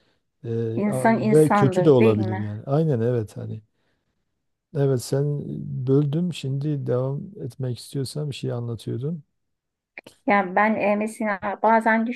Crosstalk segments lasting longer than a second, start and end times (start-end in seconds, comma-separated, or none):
0.8-2.5